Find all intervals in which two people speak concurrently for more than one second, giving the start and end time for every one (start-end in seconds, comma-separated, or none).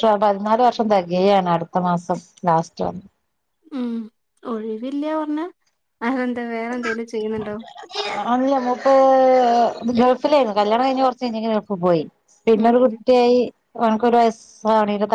none